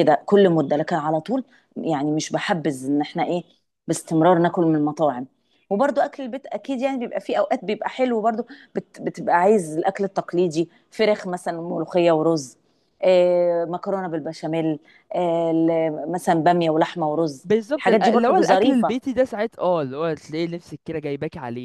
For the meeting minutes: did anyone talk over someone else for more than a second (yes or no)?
yes